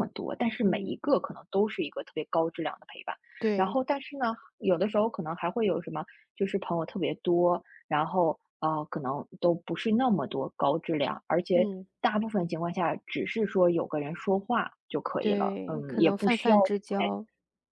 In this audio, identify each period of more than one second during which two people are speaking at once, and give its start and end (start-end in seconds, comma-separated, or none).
15.2-16.6